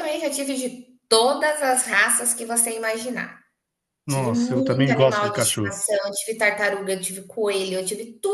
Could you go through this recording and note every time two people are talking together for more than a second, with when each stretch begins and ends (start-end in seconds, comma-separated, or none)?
4.1-5.8